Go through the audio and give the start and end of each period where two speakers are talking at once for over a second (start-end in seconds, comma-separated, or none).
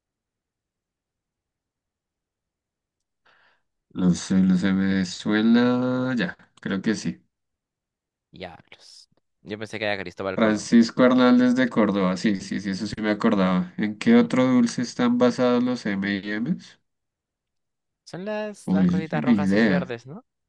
18.6-19.9